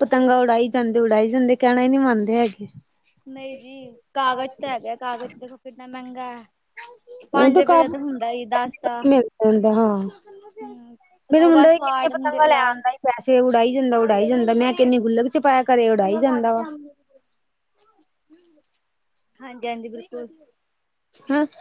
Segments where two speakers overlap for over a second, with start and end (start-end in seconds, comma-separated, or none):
none